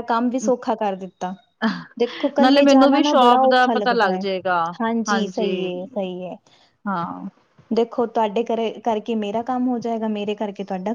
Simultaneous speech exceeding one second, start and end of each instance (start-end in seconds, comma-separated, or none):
2.4-4.2